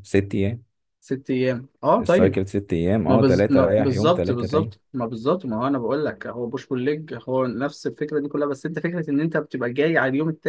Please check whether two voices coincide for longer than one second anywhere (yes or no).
yes